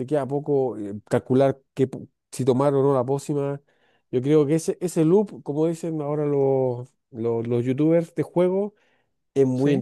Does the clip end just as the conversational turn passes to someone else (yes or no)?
no